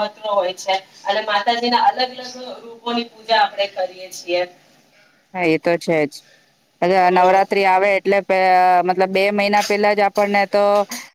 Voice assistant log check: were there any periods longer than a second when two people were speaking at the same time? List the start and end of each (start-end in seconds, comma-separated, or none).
none